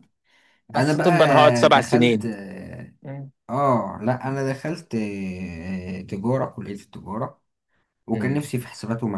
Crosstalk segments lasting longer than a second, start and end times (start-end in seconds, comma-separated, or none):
0.8-2.2